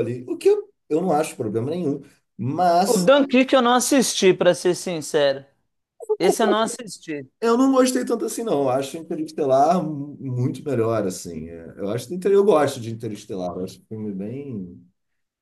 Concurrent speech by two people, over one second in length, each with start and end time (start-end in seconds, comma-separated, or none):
none